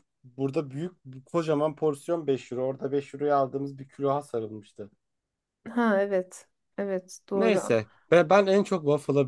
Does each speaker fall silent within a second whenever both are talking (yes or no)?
yes